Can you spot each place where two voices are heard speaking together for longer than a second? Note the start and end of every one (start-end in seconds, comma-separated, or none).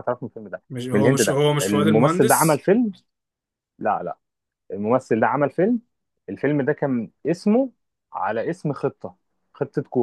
0.7-2.6